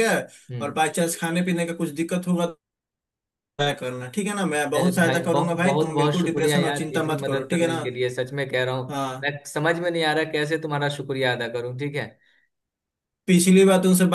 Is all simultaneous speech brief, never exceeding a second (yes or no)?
no